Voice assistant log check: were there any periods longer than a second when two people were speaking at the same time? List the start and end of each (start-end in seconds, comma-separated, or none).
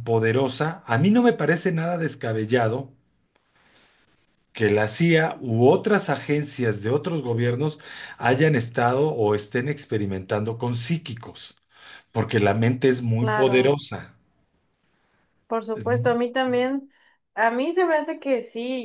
none